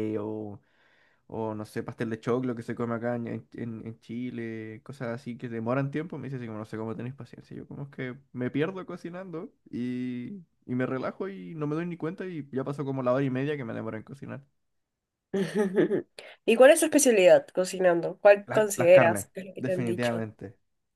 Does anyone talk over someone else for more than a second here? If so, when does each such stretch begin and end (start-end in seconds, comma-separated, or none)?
18.5-20.2